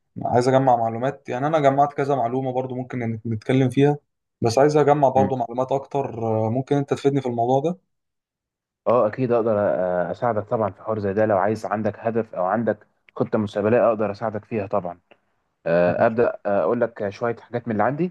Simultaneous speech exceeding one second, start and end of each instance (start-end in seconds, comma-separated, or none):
none